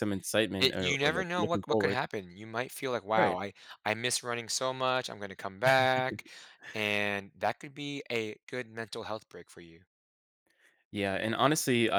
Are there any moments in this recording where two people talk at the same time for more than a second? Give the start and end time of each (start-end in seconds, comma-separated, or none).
0.6-2.0